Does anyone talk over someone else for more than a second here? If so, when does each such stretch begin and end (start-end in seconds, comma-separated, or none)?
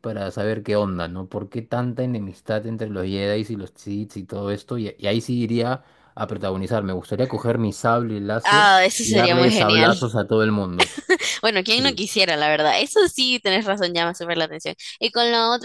8.4-9.9